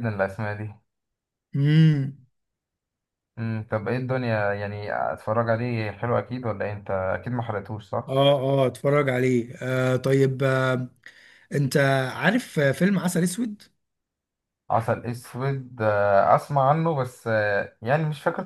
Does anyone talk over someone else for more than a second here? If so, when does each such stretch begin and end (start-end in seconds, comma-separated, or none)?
none